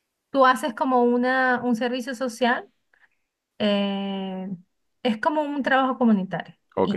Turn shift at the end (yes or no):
yes